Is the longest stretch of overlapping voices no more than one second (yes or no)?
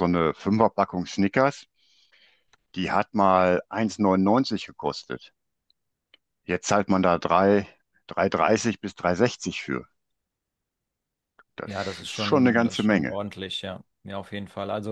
no